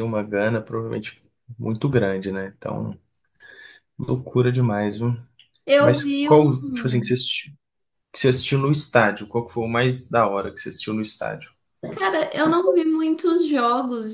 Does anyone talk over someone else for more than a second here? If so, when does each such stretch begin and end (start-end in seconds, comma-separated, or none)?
5.8-7.1